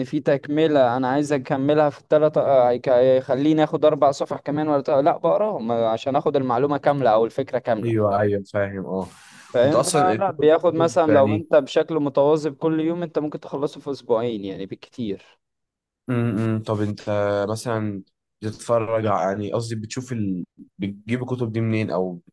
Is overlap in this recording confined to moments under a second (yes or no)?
no